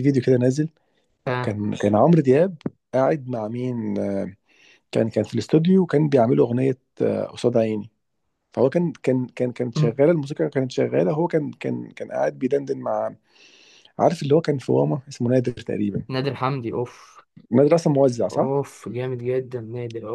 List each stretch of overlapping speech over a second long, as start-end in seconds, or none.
none